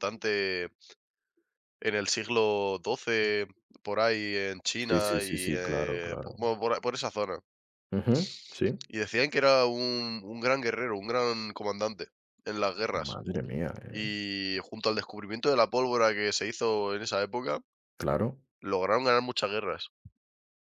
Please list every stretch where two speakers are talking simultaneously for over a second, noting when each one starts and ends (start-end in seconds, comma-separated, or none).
4.9-6.4